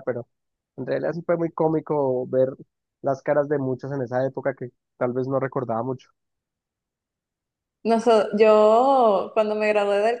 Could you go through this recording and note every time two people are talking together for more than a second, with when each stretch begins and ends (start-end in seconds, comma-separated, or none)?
none